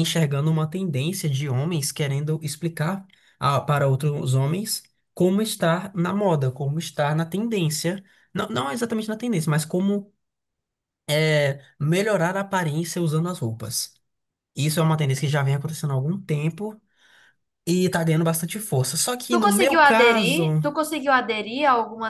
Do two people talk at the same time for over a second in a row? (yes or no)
yes